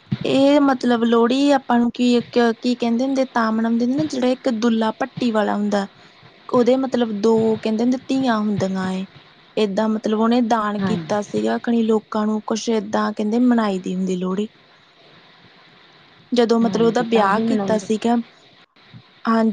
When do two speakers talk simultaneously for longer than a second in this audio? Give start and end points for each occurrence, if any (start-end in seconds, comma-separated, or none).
16.6-17.9